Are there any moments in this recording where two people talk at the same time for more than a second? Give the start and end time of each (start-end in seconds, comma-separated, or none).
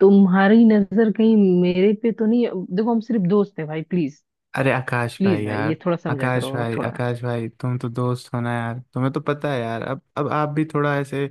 5.2-6.9